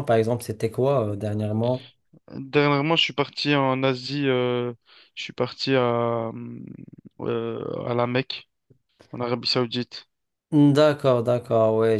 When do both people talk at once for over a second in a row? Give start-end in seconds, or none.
none